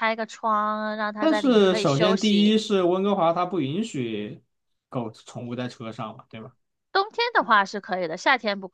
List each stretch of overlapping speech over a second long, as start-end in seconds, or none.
1.2-2.6